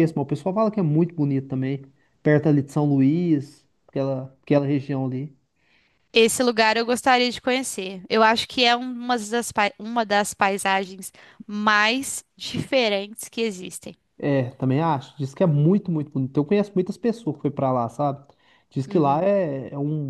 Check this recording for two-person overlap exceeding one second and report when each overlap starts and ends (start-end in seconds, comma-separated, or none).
none